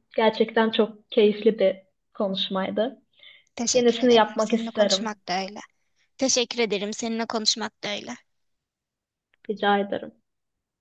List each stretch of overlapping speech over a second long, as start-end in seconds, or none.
3.7-5.1